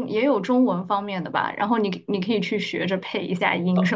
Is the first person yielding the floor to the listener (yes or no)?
yes